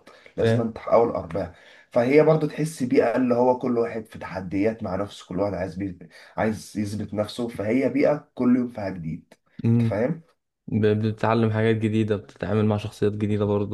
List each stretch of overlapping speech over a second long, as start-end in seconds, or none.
none